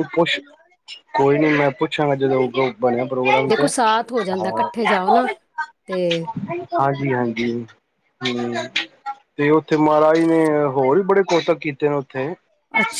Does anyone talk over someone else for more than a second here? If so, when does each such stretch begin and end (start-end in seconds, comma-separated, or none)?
none